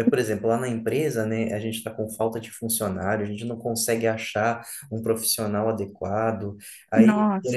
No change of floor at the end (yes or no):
yes